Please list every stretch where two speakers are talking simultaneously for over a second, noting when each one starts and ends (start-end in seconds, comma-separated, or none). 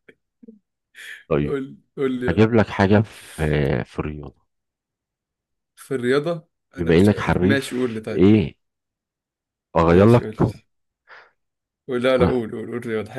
6.8-8.3